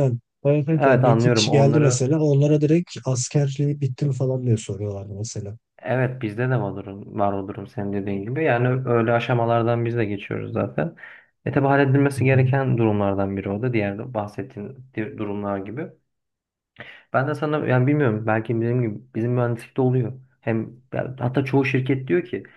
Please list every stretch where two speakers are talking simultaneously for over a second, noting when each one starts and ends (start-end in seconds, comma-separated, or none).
0.8-2.1